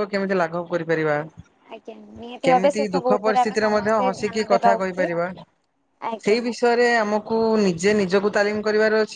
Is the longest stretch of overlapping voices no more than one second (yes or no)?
no